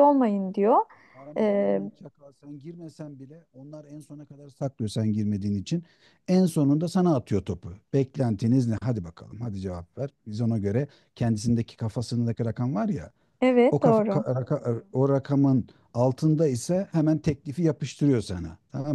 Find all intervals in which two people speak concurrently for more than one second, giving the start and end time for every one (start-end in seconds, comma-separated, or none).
none